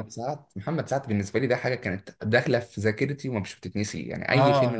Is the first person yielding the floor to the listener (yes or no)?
yes